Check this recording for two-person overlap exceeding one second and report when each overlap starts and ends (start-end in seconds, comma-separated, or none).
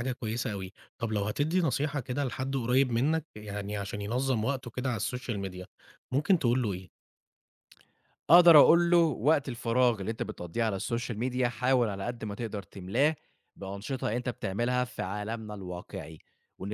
none